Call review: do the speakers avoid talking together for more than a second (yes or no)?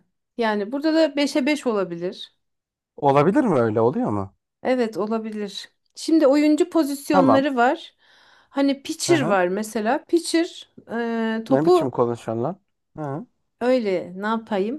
yes